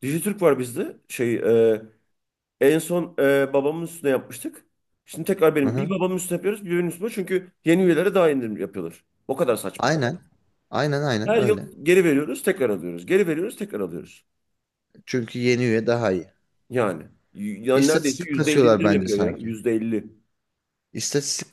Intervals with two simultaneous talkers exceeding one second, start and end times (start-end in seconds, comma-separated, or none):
17.8-19.5